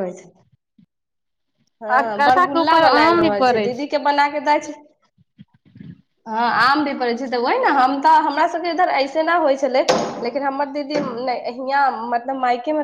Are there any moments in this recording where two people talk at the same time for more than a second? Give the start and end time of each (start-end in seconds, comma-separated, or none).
1.8-3.7